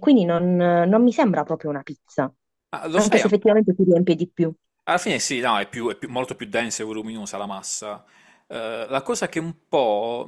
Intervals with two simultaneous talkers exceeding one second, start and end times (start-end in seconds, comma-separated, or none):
none